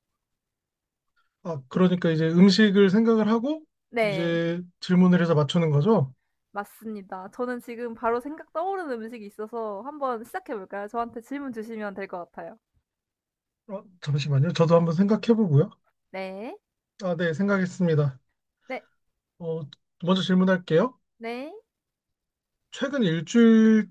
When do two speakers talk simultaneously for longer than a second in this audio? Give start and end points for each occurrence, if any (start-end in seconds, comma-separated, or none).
none